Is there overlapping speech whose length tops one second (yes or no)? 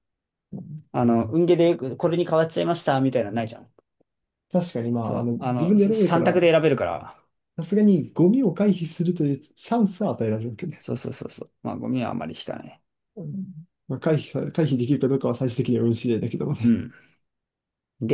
yes